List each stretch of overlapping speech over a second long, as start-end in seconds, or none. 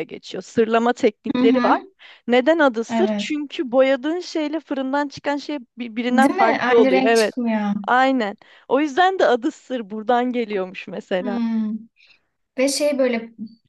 6.1-7.3